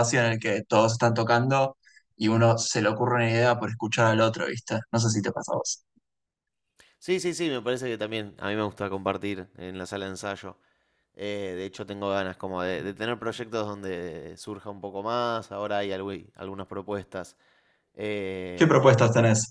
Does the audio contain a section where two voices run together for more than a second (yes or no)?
no